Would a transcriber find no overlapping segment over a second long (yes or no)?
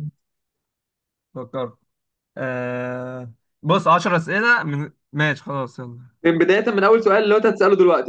yes